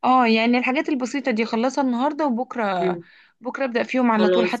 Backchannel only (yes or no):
no